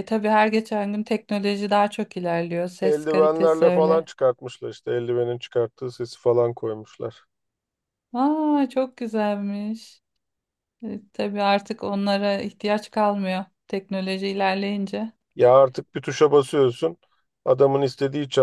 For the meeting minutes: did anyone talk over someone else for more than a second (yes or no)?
yes